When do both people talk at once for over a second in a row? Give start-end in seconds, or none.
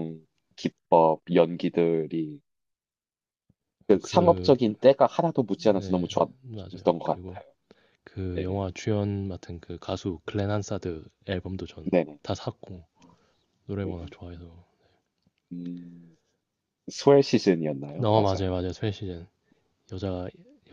5.6-7.4